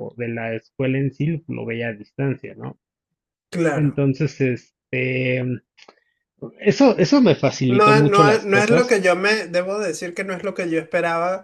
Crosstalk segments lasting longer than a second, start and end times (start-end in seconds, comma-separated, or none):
7.7-9.0